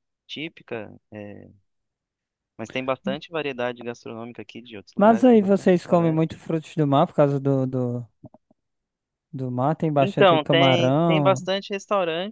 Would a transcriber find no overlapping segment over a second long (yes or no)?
no